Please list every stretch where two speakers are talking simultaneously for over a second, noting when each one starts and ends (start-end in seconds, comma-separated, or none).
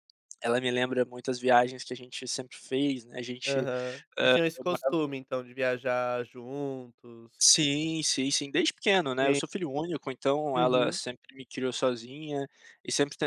none